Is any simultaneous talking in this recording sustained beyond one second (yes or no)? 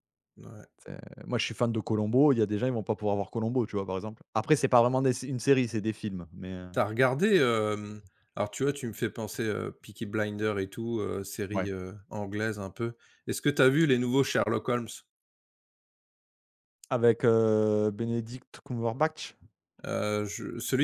no